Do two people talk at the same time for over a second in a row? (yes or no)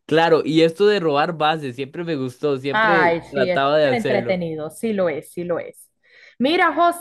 yes